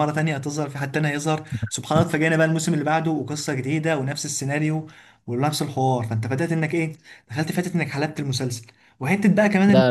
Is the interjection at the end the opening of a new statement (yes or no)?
no